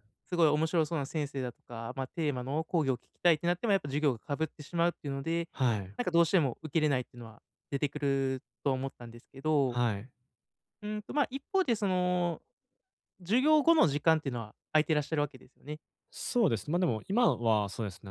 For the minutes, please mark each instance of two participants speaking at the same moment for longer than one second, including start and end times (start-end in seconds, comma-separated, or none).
none